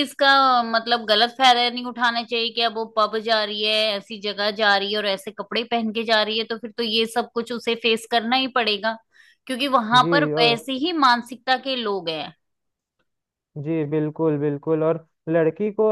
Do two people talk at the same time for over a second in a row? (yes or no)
no